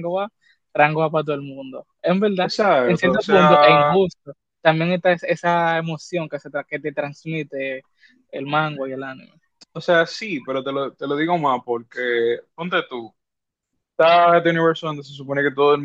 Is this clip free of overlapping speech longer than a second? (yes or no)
no